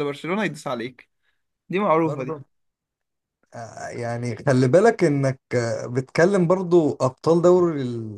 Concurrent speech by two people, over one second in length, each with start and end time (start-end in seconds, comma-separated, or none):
none